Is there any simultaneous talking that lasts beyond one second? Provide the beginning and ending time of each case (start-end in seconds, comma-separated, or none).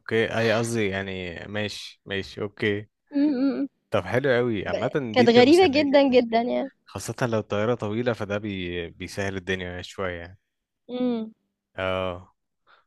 4.7-6.2